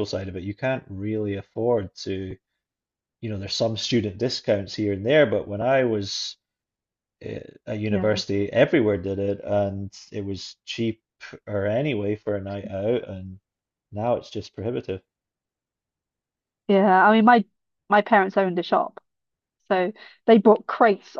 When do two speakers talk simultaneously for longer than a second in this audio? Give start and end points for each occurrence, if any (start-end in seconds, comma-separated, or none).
none